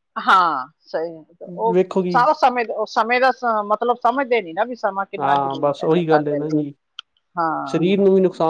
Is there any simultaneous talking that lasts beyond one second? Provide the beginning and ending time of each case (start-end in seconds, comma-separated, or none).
5.2-6.5